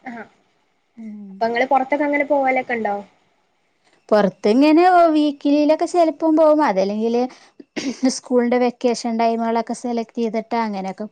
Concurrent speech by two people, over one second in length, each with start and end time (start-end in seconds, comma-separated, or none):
none